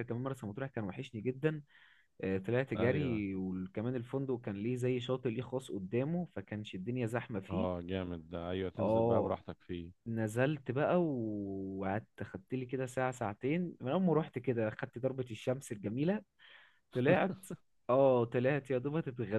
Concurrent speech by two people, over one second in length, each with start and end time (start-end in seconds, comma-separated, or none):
none